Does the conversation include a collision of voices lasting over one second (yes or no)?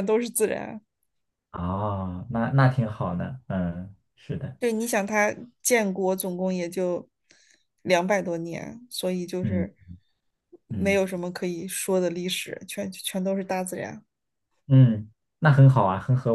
no